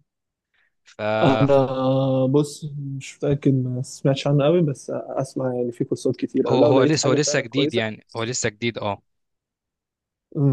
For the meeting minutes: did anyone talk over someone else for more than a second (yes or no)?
yes